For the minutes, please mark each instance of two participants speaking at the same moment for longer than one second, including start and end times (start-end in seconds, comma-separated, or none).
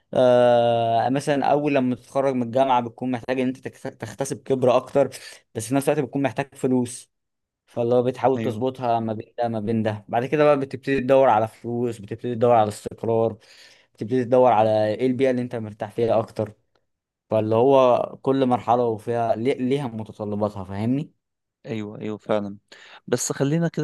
none